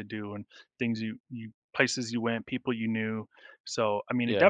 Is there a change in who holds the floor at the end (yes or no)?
no